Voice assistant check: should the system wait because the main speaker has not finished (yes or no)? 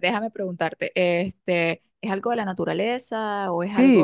no